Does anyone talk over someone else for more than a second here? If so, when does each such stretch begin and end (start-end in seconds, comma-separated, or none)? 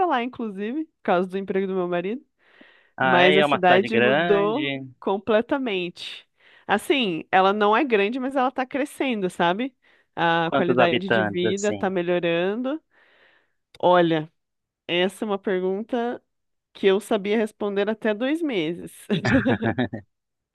3.0-4.8, 10.4-11.9